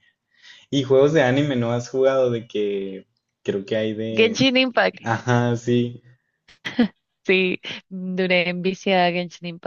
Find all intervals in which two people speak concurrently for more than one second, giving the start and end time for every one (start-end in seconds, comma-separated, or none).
none